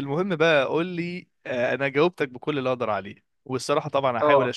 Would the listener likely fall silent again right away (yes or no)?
yes